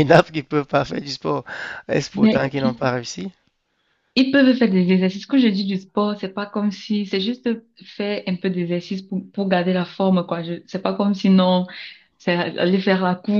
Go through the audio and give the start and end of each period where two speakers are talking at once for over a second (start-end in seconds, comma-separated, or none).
none